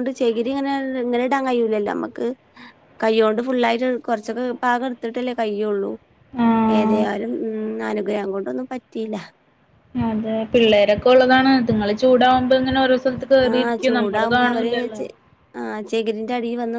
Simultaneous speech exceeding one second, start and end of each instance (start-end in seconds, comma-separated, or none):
13.5-15.0